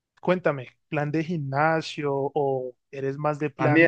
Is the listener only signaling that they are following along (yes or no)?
no